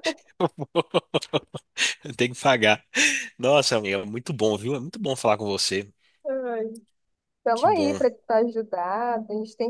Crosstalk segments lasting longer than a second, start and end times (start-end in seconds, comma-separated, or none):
none